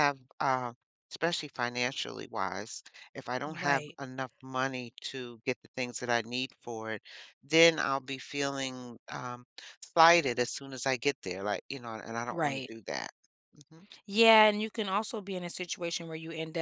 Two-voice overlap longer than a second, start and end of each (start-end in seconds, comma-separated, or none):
none